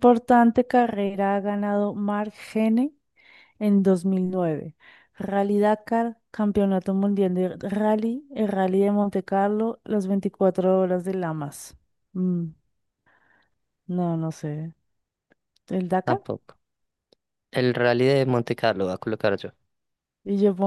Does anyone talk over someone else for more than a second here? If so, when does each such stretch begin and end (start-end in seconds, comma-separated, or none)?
none